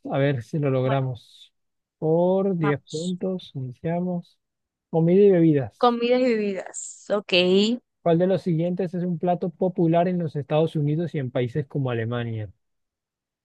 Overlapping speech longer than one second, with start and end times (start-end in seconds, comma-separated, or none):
none